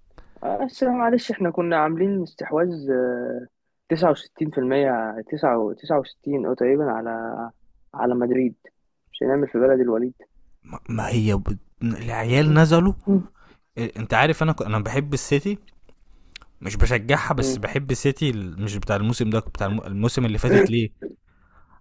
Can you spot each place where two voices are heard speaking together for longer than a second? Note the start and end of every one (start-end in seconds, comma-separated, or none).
none